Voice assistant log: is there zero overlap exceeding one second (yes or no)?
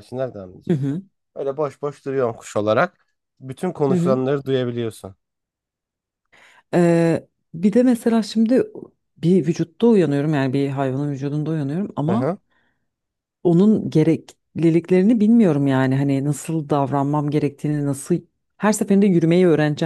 yes